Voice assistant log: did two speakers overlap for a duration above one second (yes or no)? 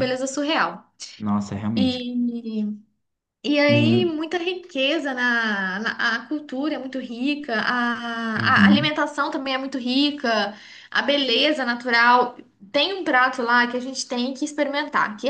no